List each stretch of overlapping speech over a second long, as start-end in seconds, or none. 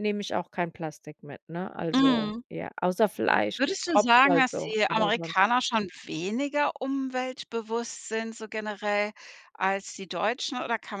3.6-5.3